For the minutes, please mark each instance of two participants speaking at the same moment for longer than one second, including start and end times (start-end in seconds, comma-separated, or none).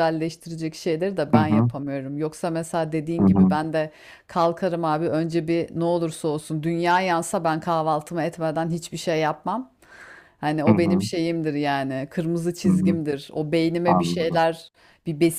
none